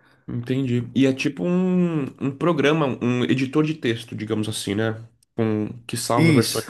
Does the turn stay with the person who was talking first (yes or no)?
yes